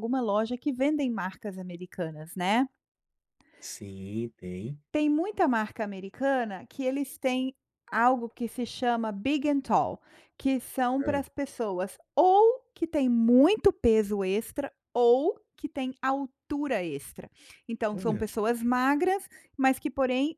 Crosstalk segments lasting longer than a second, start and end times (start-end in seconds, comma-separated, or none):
none